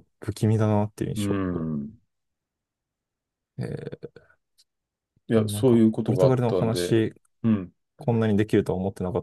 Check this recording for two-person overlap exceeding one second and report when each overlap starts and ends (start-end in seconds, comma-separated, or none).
5.3-6.9